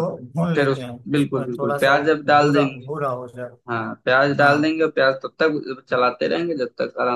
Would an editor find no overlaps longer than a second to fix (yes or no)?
no